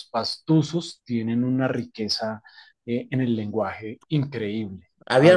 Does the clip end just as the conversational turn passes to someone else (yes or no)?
yes